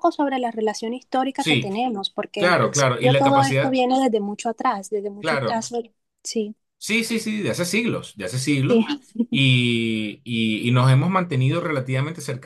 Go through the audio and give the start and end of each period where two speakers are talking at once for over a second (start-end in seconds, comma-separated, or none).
2.3-3.8